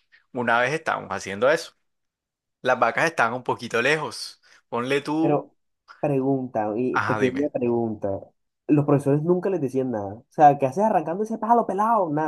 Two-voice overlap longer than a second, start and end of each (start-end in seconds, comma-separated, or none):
none